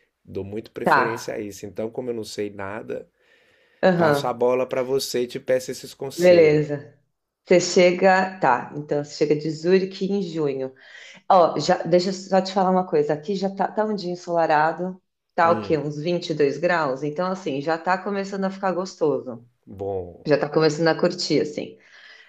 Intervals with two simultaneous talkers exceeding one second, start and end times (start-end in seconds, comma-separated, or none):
none